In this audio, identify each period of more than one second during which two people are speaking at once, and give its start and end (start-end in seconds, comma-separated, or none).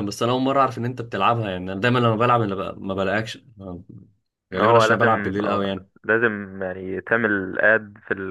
4.5-5.9